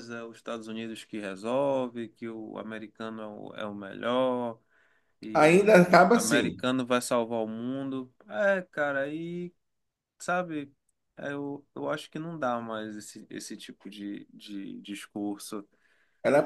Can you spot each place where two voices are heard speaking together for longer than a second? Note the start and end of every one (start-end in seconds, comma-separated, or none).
5.3-6.6